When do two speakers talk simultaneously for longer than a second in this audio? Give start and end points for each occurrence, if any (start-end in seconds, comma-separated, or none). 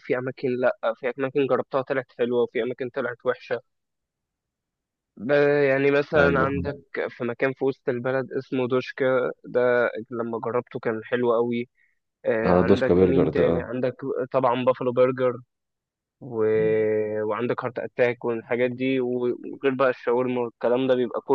12.4-13.7